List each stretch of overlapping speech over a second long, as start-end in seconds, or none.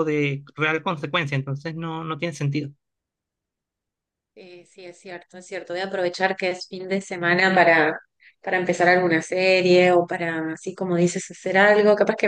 none